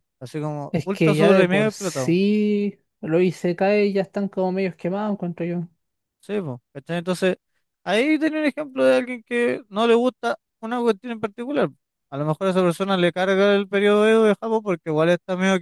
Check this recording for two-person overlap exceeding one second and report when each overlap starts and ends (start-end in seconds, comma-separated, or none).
0.7-2.2